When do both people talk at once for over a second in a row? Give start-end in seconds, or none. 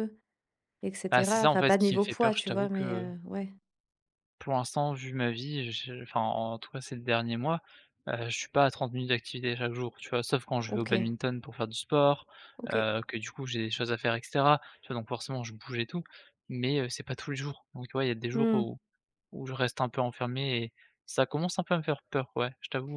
1.1-3.1